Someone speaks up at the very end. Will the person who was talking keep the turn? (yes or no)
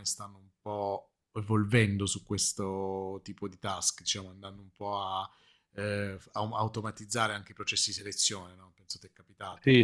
no